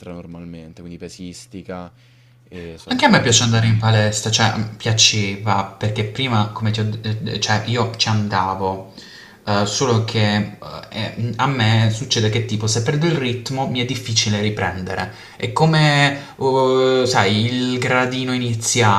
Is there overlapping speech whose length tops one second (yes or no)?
no